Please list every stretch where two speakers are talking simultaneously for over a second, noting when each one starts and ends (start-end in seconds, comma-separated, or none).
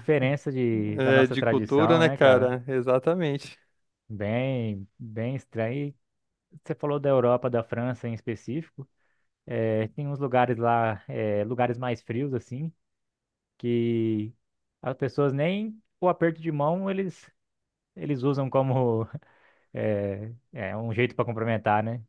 1.0-2.6